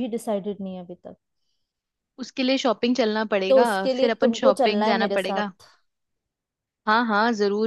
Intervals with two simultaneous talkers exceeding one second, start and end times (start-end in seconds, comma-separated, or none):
3.5-5.4